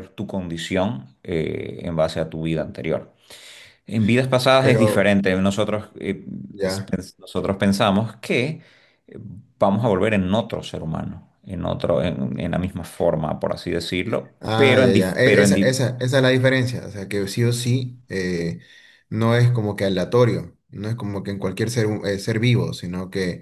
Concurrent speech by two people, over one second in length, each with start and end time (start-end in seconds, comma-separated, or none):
14.4-15.8